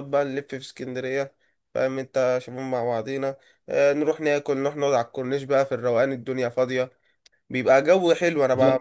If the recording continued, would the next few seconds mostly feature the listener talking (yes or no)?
no